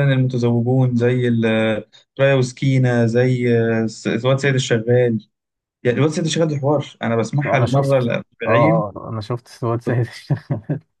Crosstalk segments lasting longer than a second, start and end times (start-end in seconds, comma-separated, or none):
7.5-8.8